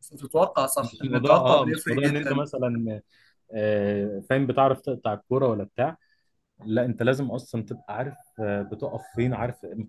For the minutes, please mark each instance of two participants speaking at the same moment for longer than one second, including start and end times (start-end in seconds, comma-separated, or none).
0.8-2.4